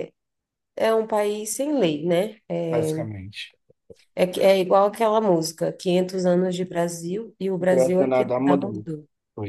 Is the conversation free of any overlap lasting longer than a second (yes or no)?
no